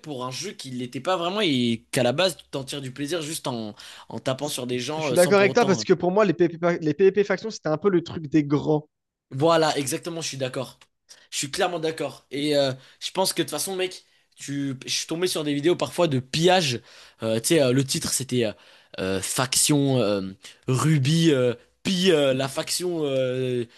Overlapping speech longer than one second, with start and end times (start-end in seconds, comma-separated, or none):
4.4-5.8